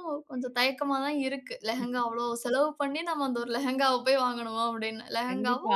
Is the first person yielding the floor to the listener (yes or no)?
yes